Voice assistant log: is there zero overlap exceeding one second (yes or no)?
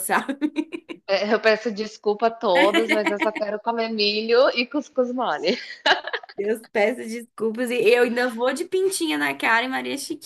yes